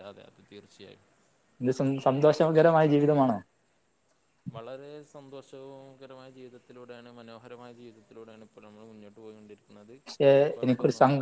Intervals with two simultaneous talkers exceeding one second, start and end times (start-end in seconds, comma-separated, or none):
none